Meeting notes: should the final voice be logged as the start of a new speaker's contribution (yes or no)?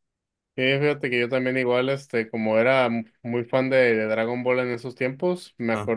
no